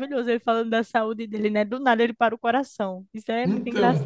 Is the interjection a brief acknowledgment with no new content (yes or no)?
no